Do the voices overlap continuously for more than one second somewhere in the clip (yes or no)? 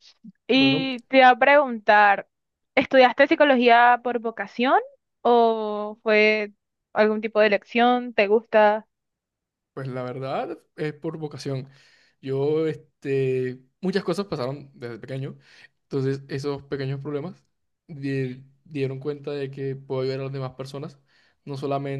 no